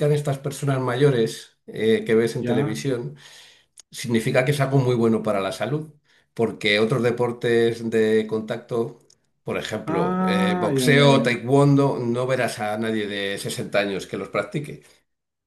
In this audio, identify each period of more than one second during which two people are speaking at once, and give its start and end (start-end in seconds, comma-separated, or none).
9.9-11.3